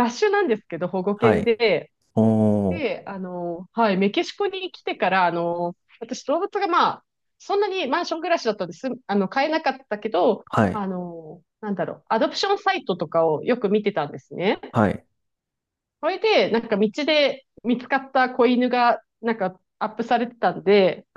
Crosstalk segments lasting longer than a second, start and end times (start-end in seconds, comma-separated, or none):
none